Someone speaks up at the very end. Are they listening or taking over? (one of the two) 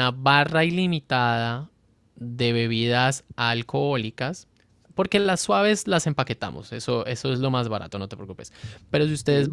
listening